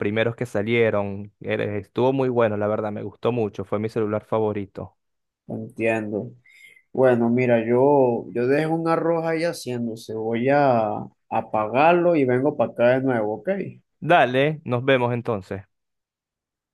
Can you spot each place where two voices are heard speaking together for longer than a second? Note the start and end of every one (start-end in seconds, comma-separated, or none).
none